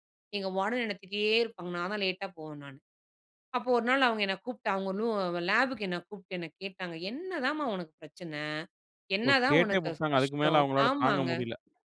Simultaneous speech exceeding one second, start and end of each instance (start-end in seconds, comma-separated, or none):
9.3-11.3